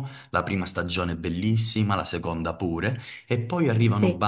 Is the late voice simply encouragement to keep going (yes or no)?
yes